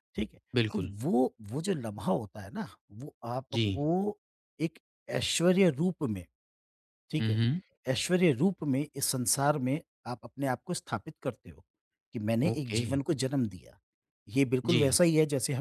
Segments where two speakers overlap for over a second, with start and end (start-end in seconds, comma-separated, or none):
none